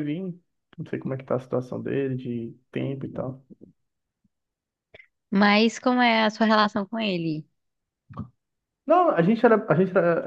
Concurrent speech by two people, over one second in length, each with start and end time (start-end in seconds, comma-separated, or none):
none